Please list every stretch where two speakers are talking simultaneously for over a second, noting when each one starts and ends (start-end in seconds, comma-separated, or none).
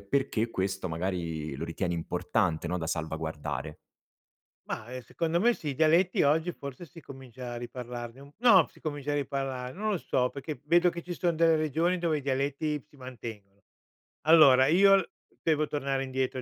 none